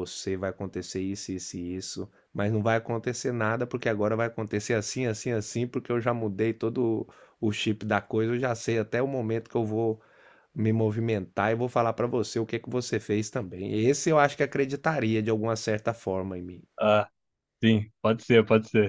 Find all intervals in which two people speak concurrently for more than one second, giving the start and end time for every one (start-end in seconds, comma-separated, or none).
none